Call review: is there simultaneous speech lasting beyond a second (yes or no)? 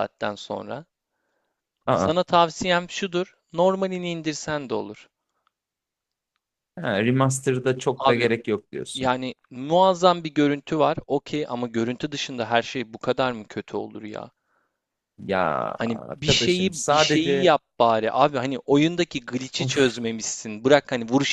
yes